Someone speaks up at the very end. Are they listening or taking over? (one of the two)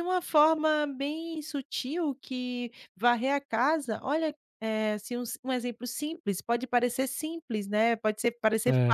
listening